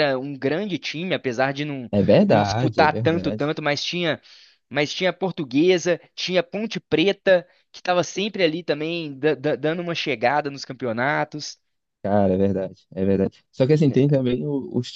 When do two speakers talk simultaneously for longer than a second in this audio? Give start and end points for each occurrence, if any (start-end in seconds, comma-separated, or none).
1.9-3.5